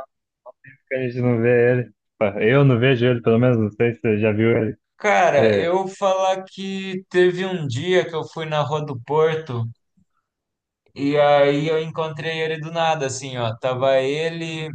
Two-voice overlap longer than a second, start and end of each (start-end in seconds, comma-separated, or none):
none